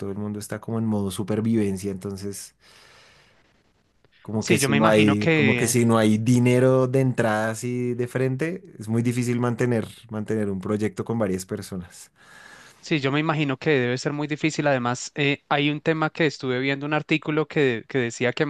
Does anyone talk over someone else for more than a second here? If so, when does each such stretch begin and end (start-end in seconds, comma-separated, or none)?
4.4-5.8